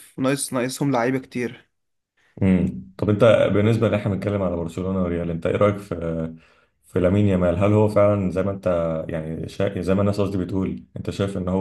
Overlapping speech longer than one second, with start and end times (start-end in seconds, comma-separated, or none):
none